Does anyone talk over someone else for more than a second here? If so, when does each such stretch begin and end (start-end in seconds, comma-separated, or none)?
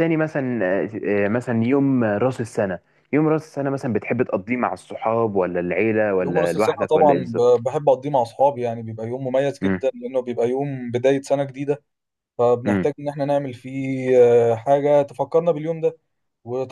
6.2-7.7